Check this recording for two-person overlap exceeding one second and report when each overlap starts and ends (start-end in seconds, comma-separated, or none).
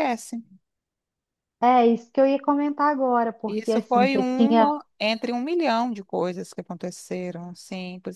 3.5-4.7